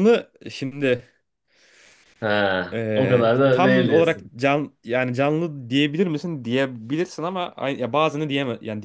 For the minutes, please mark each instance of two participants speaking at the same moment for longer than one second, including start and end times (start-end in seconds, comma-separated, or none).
2.7-4.3